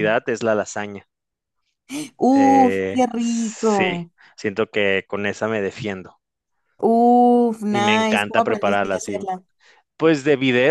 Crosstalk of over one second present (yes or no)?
yes